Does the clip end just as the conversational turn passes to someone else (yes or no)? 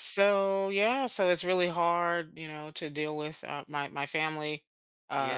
no